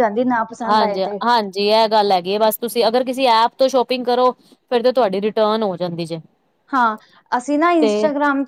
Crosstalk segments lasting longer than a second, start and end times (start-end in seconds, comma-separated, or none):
none